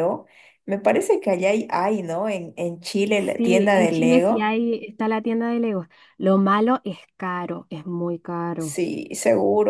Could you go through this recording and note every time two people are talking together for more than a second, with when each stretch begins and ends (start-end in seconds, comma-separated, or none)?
3.4-4.5